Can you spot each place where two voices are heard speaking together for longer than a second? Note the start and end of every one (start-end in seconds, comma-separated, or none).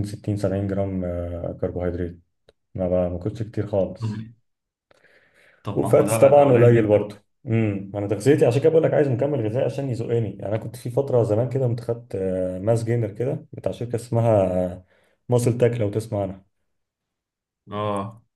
5.7-7.0